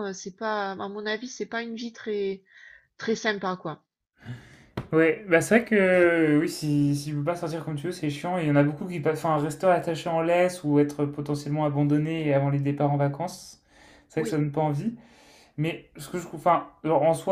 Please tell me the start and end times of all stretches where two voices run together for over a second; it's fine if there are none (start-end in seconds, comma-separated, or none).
none